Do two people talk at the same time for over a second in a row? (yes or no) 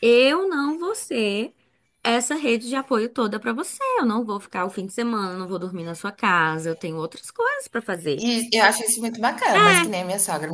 no